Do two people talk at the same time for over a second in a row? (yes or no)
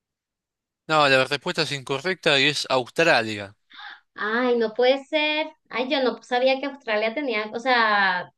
no